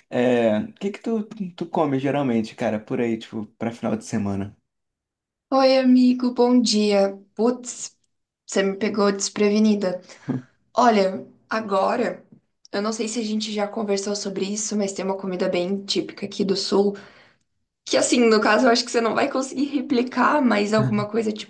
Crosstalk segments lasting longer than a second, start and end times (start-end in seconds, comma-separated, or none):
none